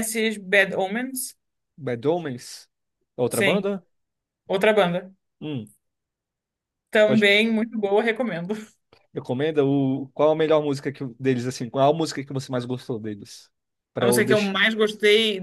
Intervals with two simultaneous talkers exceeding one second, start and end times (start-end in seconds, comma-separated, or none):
none